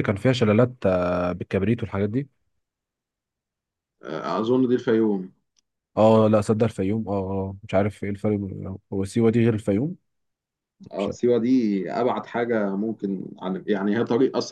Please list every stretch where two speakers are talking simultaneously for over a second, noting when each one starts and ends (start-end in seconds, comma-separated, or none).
none